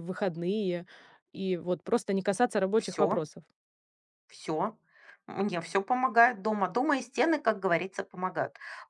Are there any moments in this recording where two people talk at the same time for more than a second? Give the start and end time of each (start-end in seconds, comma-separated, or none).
none